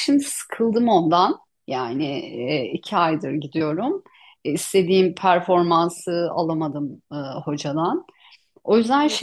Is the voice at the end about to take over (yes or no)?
yes